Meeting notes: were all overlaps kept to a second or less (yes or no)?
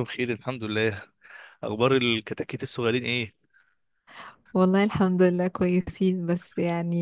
yes